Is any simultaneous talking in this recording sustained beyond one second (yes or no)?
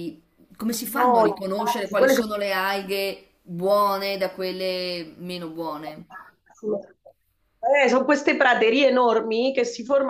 yes